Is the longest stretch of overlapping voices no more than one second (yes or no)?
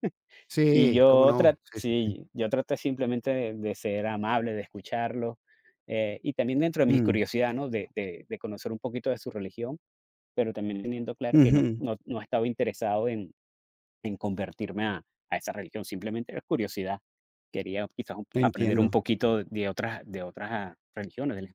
no